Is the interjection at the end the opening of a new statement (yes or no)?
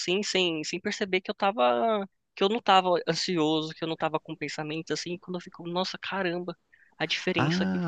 yes